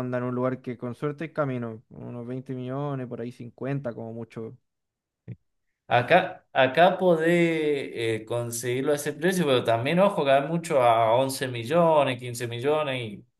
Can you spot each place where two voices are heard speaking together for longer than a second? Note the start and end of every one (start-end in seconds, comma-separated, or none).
none